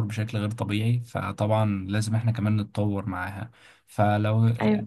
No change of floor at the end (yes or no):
yes